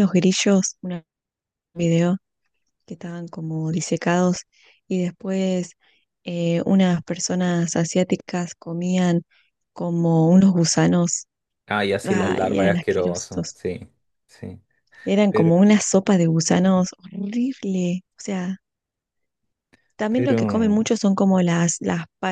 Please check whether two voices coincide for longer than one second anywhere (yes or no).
yes